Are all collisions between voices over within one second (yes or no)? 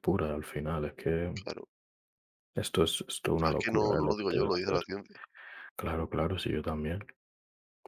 no